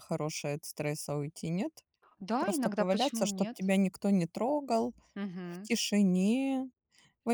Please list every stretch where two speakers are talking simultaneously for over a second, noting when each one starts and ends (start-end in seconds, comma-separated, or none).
2.4-3.6